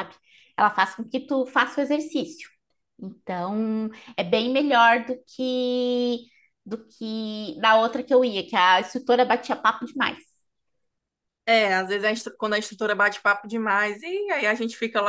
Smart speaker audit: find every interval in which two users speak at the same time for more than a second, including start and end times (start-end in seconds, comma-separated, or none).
none